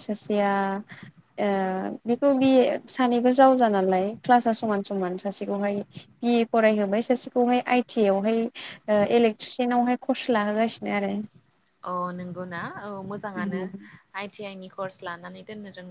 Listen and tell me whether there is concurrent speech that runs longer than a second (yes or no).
no